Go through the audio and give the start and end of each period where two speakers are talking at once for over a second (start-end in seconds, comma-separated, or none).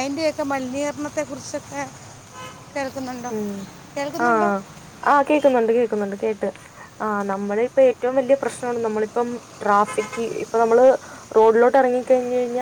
none